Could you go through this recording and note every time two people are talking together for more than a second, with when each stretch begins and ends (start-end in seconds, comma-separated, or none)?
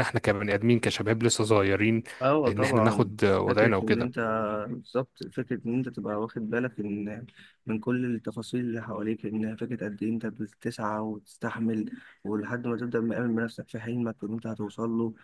2.5-4.1